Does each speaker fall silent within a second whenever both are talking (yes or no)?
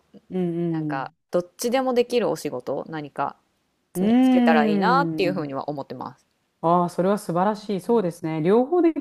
yes